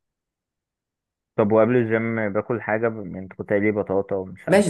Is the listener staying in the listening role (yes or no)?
no